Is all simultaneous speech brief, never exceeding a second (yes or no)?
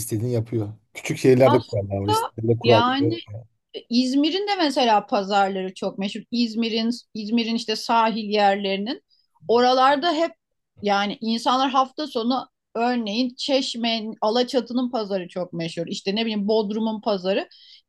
no